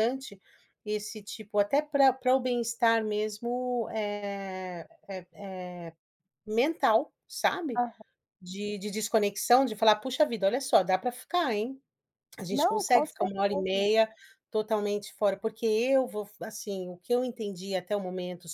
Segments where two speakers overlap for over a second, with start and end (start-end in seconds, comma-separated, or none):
12.5-13.9